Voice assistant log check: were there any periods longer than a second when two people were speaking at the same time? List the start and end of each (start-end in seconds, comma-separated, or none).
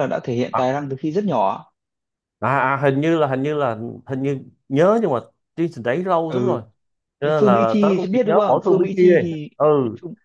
7.2-9.5